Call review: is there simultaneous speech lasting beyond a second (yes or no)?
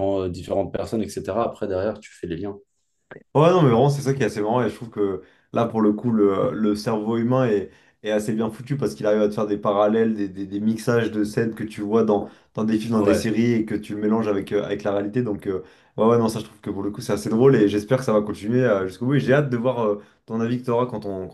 no